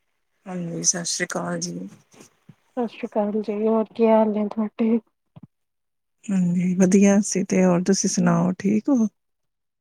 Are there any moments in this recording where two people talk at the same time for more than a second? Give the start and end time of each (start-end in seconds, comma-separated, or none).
none